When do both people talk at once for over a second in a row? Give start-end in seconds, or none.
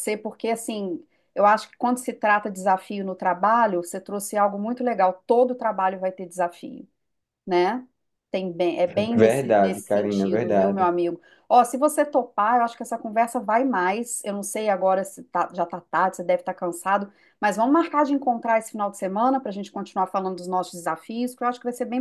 9.2-10.9